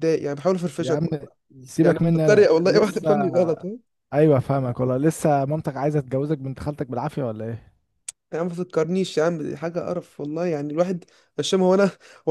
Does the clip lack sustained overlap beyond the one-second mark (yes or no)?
no